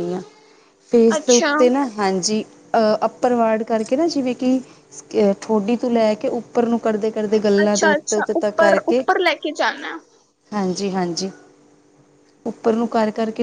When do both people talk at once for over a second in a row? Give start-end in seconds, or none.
7.6-9.0